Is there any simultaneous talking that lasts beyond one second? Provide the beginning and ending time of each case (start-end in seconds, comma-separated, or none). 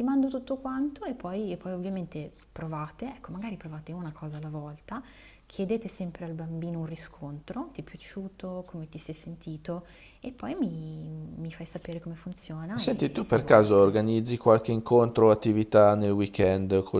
12.7-13.9